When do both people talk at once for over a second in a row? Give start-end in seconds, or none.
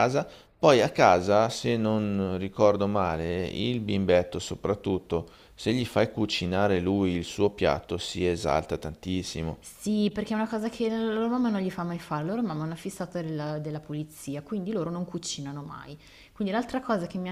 none